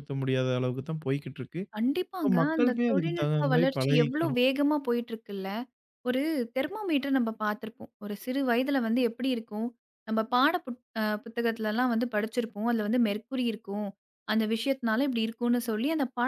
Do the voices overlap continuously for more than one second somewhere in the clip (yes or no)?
yes